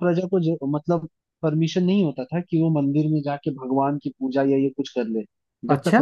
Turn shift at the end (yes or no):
no